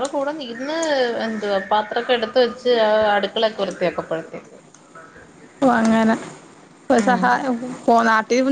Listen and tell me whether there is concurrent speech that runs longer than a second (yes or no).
no